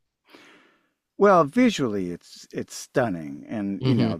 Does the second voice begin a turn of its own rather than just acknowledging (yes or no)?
no